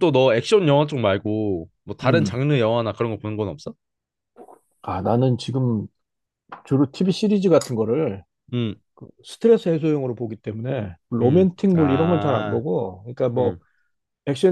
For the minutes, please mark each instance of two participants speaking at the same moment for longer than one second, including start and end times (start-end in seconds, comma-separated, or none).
11.2-12.6